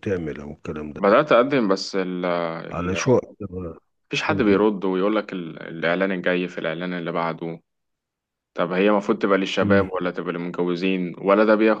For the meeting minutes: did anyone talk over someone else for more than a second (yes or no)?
no